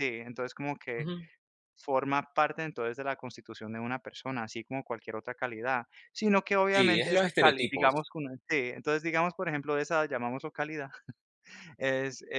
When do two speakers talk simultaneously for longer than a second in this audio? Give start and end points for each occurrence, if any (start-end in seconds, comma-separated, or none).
6.7-7.9